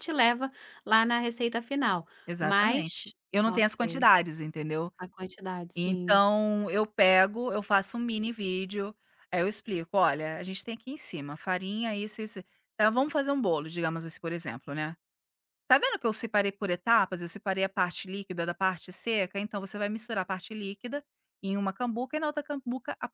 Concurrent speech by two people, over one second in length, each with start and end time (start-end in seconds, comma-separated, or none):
2.3-4.0